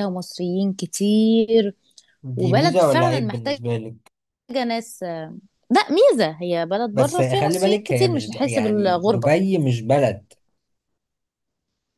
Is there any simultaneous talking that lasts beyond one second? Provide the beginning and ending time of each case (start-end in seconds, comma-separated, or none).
2.4-3.6, 6.9-9.3